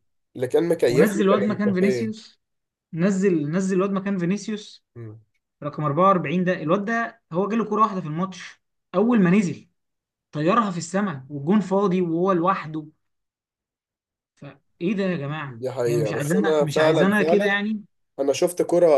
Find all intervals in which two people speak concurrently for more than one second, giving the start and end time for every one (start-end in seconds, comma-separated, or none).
0.9-2.1, 15.5-17.5